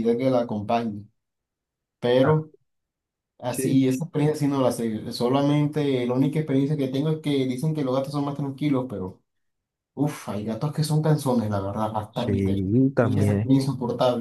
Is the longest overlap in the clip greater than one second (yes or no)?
yes